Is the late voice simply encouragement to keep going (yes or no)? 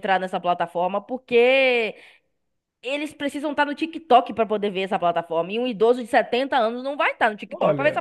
no